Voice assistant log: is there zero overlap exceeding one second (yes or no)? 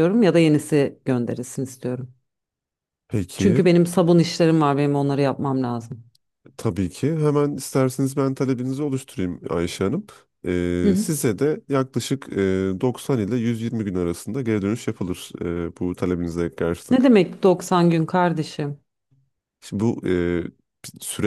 yes